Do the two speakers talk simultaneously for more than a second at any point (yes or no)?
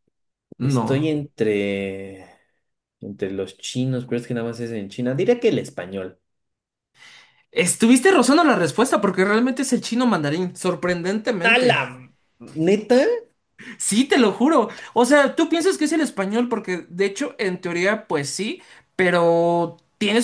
no